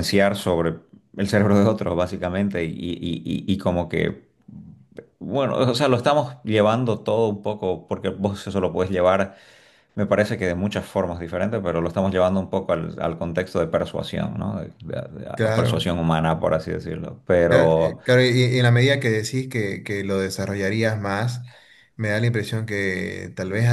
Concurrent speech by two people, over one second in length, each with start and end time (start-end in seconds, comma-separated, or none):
none